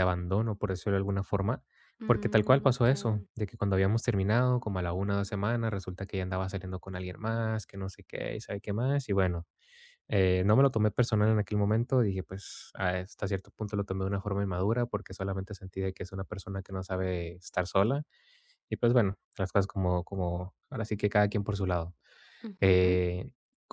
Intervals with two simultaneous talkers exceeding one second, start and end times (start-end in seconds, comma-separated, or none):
2.0-3.3